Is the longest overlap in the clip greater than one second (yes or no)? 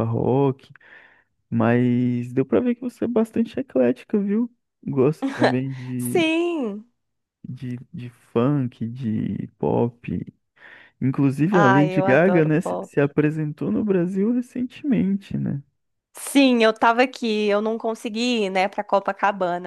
yes